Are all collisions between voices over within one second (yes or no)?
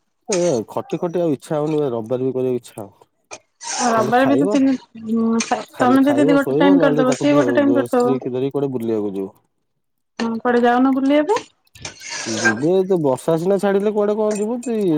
no